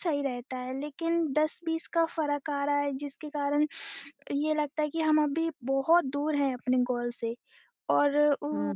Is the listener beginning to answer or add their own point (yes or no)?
no